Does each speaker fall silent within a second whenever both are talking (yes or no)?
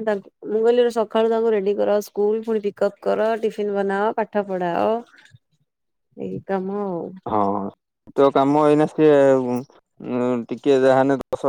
yes